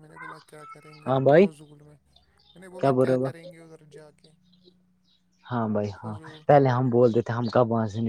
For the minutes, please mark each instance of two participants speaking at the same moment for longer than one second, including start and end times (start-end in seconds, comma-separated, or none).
none